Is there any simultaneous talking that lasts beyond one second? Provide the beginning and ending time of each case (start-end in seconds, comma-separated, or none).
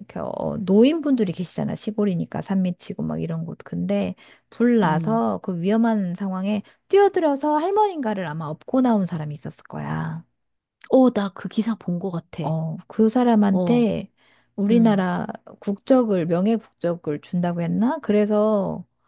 none